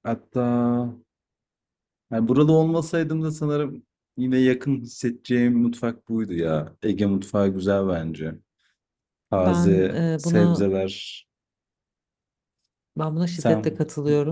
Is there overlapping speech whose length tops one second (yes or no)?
yes